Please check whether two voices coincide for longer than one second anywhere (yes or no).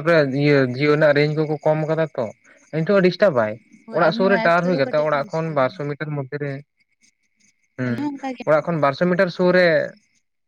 yes